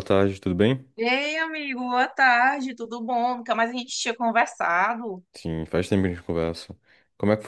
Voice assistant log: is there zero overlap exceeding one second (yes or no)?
yes